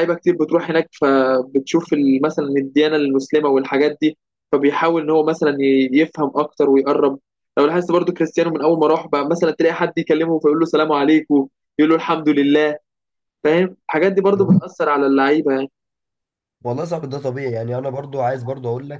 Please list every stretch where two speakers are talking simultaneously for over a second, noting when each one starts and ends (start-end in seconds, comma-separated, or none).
none